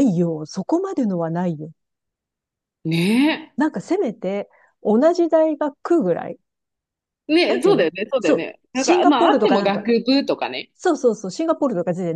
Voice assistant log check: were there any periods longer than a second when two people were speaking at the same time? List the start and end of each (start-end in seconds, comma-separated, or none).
7.5-9.8